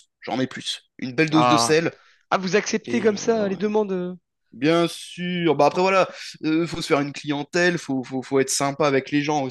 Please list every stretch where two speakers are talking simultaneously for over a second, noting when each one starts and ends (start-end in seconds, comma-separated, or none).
none